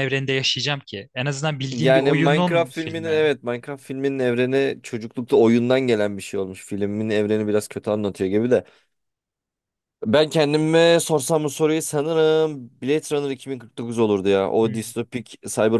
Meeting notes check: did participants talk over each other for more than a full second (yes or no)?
yes